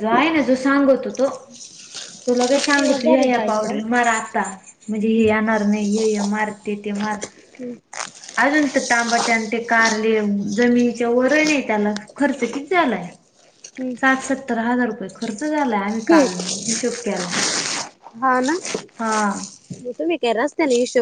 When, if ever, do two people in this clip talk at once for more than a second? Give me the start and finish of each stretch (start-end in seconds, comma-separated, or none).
2.4-3.8